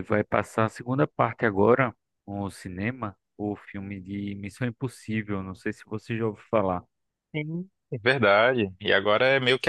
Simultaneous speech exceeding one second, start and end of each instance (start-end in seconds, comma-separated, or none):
none